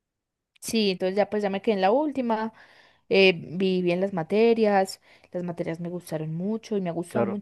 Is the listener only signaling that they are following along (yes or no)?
yes